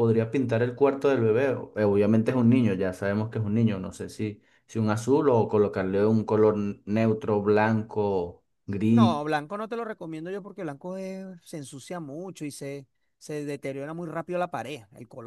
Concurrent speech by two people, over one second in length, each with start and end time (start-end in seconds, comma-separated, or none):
none